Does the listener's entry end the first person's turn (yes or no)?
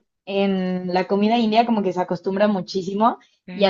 no